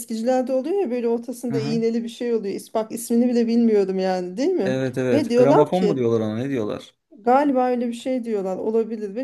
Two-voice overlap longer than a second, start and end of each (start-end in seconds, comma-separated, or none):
4.6-6.0